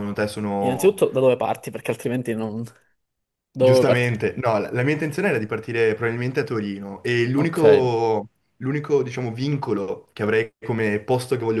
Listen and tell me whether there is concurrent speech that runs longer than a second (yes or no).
no